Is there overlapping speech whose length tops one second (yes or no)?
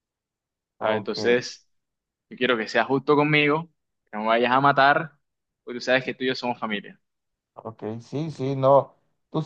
no